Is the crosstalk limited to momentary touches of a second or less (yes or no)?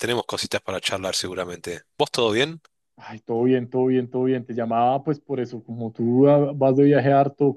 yes